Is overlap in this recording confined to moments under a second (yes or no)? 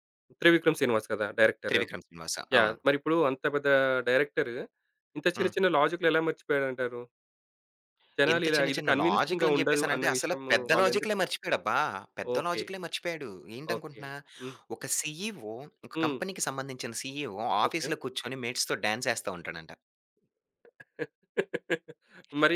no